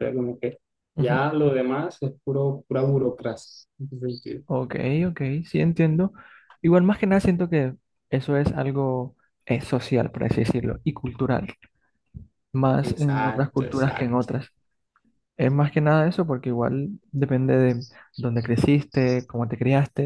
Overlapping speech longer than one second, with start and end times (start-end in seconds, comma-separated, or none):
12.8-14.3